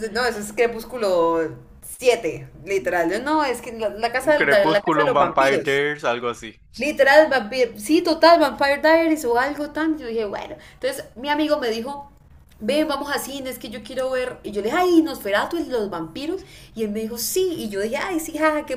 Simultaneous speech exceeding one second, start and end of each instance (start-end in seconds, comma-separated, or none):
4.2-5.8